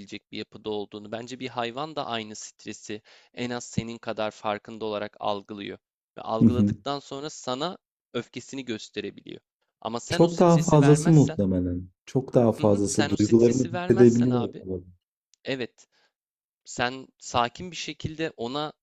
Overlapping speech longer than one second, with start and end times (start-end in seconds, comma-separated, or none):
10.1-11.4, 12.6-14.5